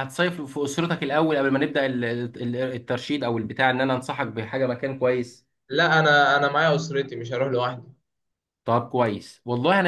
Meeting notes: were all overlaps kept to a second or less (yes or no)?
yes